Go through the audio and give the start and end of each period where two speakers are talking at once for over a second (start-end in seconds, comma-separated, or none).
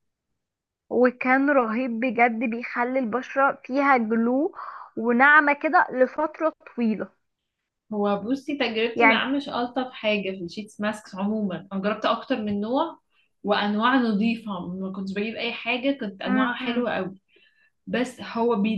none